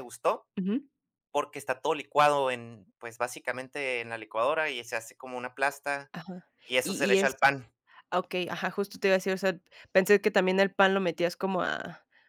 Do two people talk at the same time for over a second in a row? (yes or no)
no